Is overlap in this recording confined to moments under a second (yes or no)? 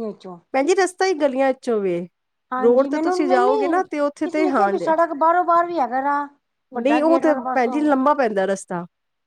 yes